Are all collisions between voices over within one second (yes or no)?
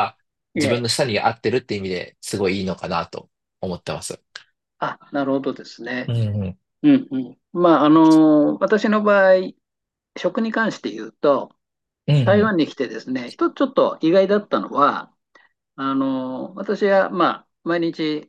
yes